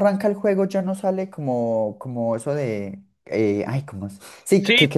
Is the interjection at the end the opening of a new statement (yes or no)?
no